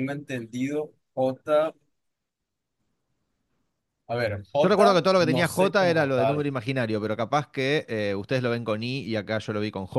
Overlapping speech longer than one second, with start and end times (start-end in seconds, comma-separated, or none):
4.6-6.5